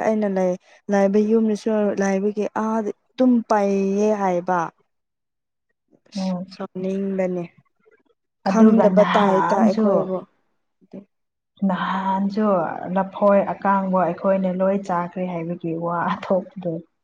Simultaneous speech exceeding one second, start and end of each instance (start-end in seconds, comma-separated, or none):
8.5-9.9